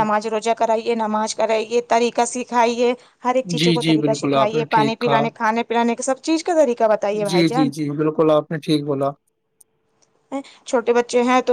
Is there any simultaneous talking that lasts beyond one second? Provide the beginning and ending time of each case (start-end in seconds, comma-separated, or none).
3.6-5.2